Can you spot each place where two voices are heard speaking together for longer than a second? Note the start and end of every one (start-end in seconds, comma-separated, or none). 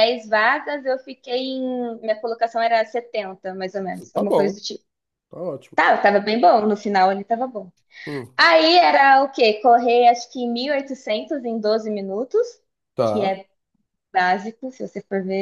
none